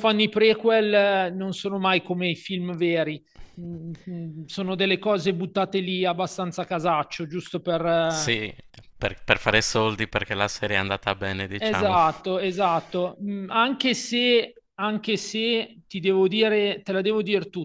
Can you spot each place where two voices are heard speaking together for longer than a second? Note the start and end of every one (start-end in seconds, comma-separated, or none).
none